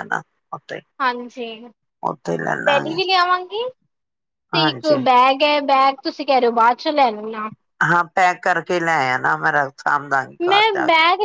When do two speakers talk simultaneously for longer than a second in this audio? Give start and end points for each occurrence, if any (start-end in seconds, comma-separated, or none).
none